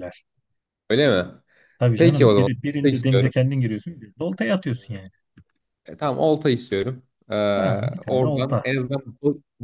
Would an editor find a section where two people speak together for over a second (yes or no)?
yes